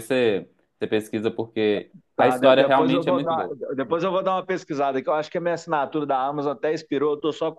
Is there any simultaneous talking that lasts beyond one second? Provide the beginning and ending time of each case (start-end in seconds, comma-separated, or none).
2.1-3.6